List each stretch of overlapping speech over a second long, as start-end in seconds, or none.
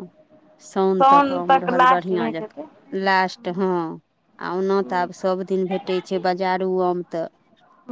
1.0-2.7